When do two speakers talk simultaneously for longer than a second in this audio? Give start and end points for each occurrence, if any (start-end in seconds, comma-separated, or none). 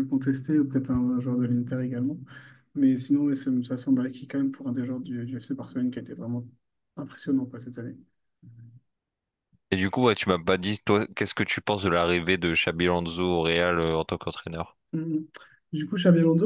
none